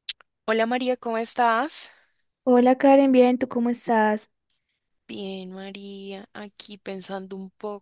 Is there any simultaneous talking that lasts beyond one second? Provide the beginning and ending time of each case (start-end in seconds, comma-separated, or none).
none